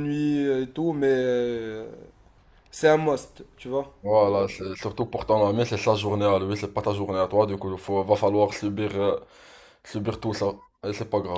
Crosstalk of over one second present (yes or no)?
no